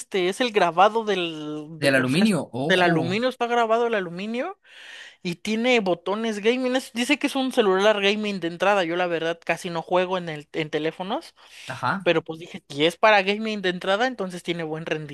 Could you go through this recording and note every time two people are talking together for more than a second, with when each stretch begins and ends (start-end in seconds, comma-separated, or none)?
1.8-3.2